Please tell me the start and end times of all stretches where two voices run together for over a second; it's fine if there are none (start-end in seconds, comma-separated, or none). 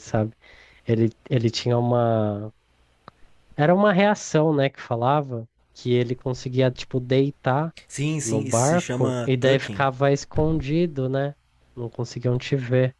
8.2-9.8